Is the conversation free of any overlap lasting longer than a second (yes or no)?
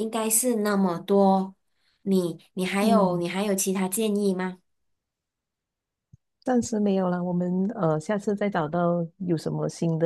yes